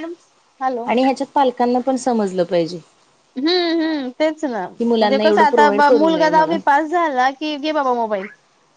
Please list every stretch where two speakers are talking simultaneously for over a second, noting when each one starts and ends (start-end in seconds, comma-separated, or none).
4.8-6.6